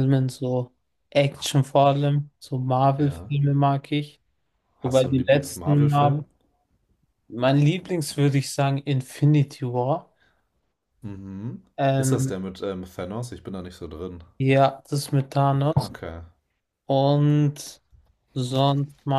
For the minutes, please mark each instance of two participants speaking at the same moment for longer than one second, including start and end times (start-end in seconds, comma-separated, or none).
4.8-6.2